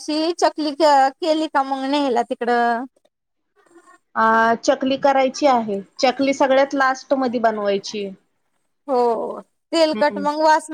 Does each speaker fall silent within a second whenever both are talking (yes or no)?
yes